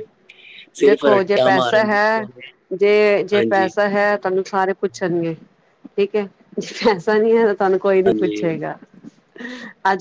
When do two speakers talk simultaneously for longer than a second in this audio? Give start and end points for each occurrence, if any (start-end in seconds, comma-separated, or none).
0.8-2.2